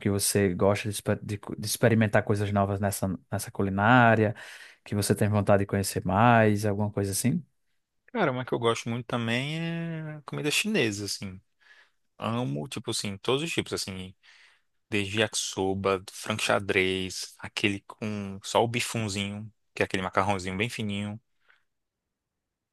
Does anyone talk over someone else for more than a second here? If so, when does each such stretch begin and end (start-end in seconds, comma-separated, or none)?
none